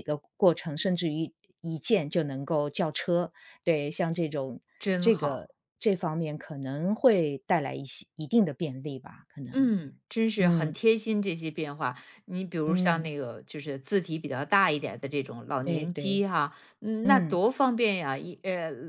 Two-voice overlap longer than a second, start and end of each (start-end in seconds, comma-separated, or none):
none